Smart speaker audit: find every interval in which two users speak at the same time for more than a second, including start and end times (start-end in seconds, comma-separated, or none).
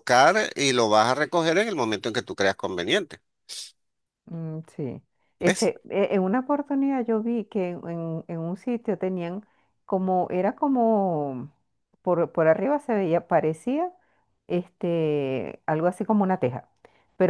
none